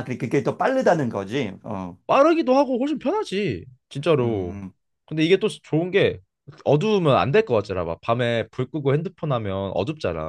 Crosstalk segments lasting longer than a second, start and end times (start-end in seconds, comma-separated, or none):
none